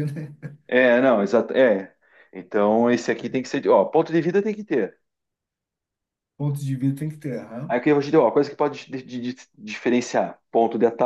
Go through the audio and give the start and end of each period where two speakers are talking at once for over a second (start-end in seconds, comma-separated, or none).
none